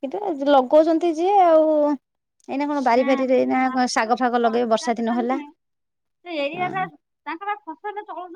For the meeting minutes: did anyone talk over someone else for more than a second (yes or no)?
yes